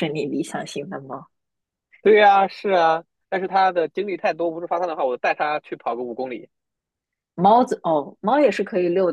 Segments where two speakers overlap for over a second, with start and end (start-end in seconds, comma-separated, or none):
none